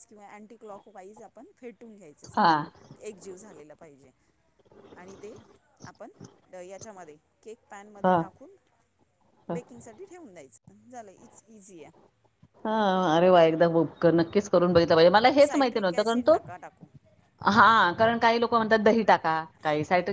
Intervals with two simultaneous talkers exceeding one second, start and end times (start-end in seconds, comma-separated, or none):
15.1-16.4